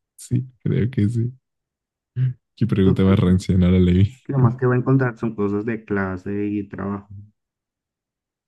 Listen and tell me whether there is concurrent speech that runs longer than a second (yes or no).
no